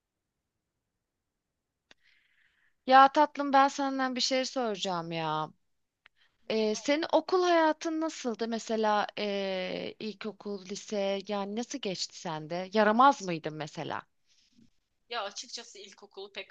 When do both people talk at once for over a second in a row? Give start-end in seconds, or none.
none